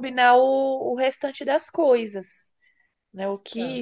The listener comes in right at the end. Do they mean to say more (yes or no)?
yes